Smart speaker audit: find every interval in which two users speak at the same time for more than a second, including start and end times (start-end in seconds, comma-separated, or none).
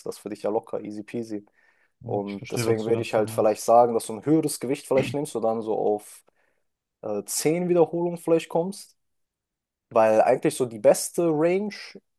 2.0-3.6